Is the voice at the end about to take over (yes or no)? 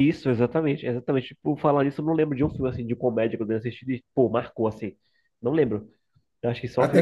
yes